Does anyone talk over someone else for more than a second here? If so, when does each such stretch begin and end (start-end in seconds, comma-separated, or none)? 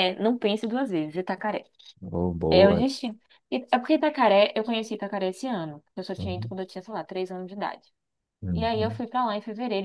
none